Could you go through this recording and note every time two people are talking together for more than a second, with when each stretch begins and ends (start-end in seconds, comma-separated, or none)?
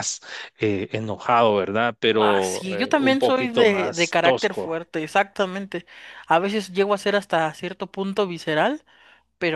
2.2-4.7